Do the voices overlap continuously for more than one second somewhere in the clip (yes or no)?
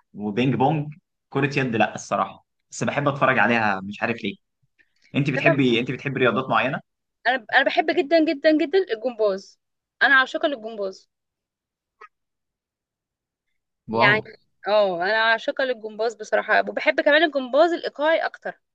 no